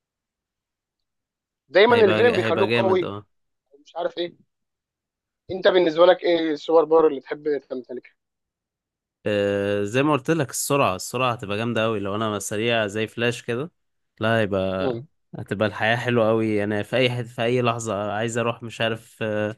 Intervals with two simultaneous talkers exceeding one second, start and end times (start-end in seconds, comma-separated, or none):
1.9-3.1